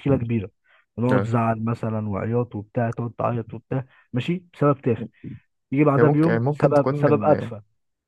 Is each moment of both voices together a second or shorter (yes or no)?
no